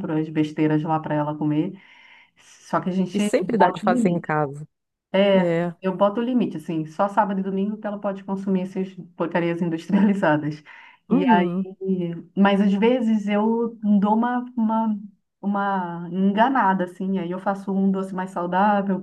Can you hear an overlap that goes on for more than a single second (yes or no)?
yes